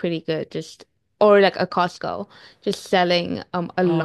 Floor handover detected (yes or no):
no